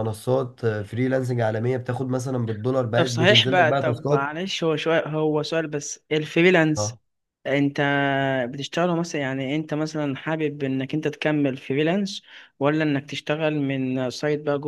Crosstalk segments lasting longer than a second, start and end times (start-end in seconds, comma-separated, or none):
2.9-4.4